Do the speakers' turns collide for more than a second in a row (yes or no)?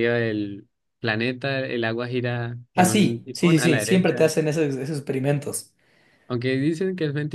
yes